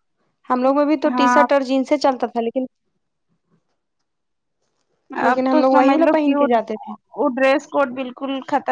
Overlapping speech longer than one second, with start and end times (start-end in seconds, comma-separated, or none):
5.3-6.9